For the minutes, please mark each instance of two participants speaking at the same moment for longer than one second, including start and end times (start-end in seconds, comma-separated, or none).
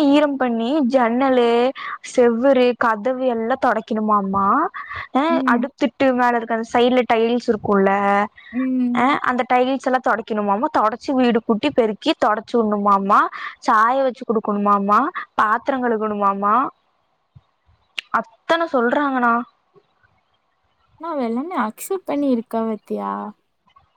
none